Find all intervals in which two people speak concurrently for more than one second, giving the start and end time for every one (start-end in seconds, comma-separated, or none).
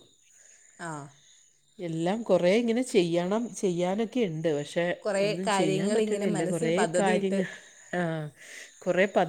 5.2-7.4